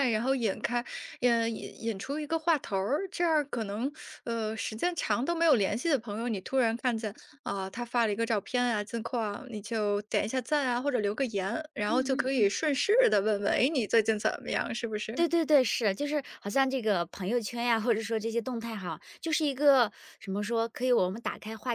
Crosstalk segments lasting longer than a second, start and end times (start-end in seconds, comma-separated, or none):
none